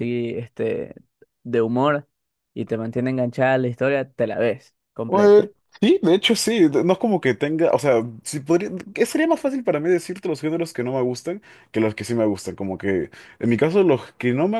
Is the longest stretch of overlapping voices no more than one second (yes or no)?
yes